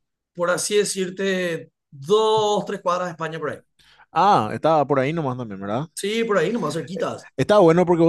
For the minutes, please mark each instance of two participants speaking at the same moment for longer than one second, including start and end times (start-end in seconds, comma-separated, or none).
none